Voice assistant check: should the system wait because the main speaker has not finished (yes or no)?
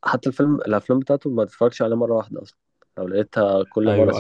no